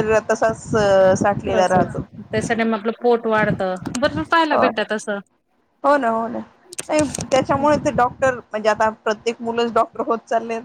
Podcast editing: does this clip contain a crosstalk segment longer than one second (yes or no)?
no